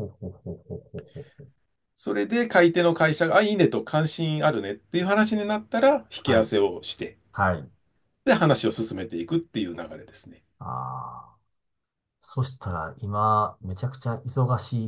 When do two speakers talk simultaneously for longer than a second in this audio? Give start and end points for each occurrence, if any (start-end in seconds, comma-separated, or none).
none